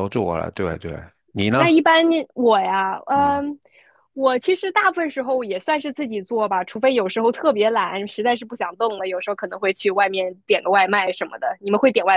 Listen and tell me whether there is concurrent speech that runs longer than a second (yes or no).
no